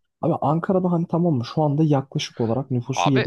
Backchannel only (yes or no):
yes